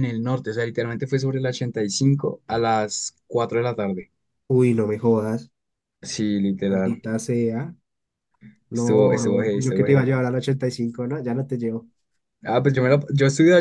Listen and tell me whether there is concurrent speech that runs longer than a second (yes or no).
yes